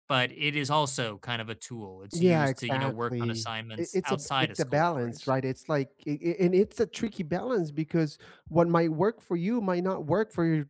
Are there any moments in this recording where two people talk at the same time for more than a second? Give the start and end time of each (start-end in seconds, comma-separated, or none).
2.2-5.3